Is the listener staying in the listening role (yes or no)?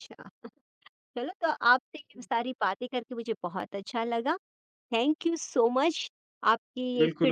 no